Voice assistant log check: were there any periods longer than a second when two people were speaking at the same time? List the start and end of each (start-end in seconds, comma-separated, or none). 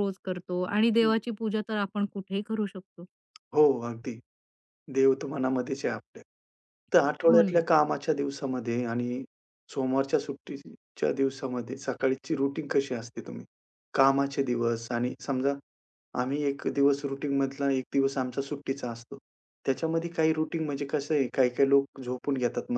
none